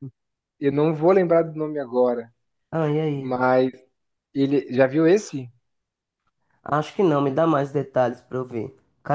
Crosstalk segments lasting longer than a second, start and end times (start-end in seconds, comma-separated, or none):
none